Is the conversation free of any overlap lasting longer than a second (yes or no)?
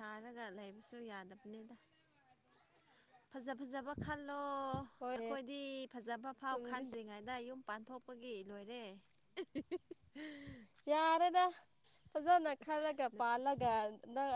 yes